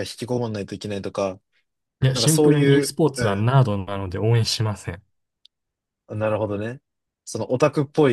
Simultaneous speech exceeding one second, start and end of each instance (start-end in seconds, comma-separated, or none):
2.1-3.5